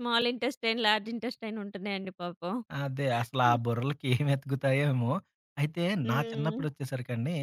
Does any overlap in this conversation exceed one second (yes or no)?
no